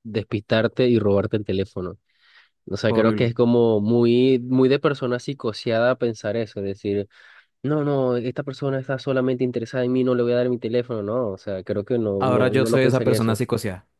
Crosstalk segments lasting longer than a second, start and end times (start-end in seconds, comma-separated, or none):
12.2-13.4